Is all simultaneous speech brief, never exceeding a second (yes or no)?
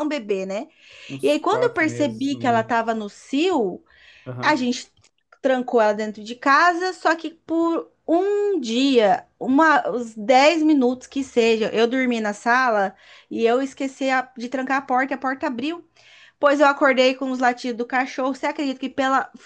no